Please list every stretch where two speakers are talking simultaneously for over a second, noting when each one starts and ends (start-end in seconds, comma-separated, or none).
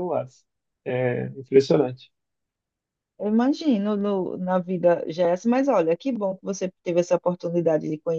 none